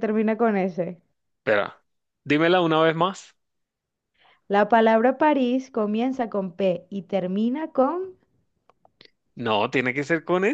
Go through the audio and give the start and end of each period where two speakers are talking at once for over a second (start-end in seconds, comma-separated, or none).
none